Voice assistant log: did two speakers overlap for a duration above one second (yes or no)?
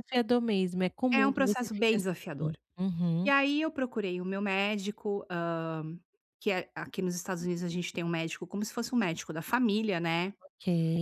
yes